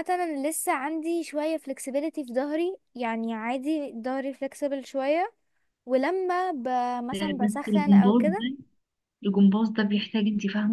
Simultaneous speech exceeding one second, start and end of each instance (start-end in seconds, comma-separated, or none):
7.1-8.4